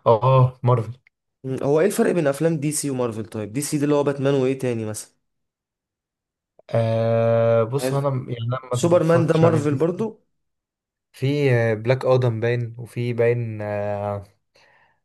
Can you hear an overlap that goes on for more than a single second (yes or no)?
yes